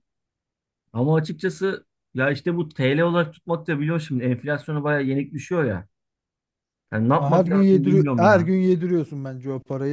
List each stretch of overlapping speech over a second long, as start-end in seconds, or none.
7.1-8.5